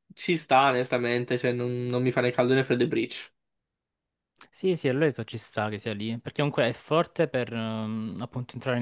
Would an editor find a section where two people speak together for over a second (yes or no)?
no